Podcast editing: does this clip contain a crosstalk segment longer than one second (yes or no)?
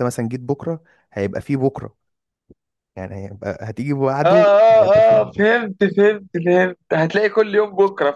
yes